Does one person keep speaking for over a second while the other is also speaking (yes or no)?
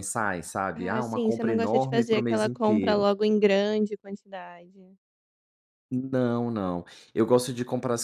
yes